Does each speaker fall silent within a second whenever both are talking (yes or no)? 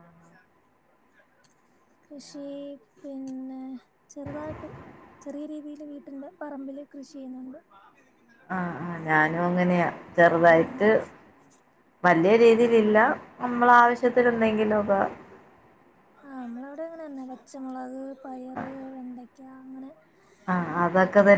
yes